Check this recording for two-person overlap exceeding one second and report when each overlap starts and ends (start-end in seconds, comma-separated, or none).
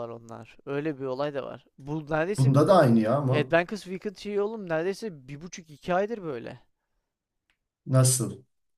none